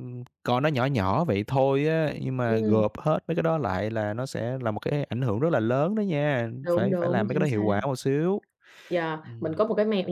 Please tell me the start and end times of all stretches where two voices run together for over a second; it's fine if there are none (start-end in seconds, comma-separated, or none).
6.6-7.8